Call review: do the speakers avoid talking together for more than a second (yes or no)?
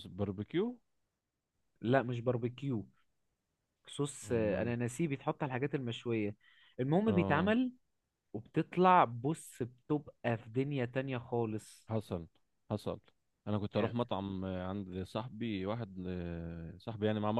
yes